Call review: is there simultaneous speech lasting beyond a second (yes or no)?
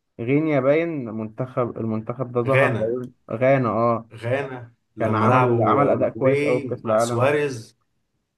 yes